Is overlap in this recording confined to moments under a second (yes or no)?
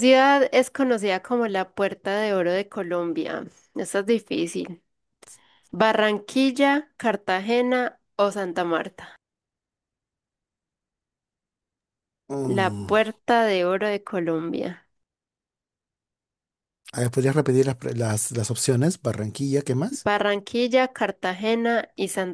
yes